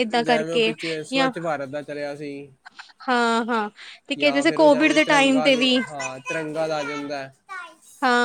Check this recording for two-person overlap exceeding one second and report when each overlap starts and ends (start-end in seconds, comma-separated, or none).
4.2-5.8